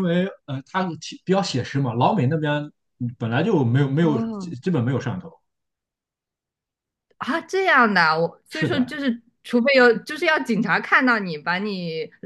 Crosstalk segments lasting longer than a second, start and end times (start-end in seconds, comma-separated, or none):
none